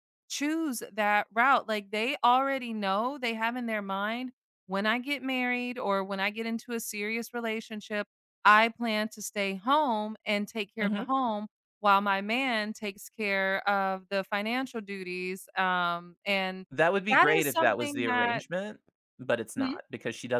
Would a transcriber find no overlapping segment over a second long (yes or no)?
no